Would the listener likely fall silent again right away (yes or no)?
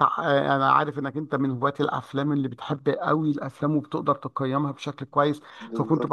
yes